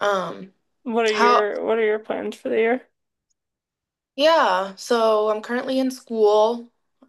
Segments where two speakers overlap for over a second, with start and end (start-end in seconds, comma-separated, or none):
none